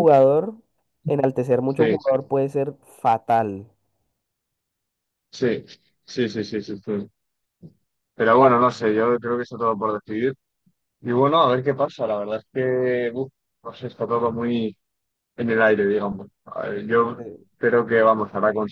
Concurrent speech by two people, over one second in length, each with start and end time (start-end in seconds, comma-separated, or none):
none